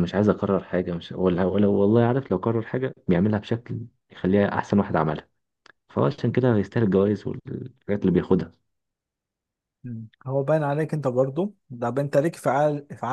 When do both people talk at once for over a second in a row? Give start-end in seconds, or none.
none